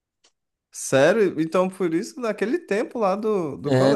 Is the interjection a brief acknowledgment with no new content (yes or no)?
no